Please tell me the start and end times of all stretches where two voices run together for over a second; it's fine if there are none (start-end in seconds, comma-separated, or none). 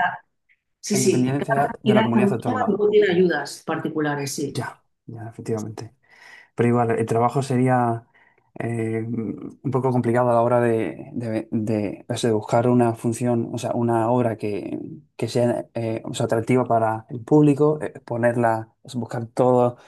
0.9-2.8